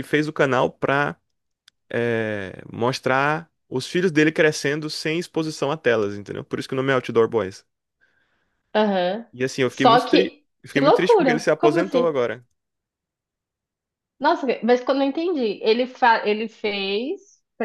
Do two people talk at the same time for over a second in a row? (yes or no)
yes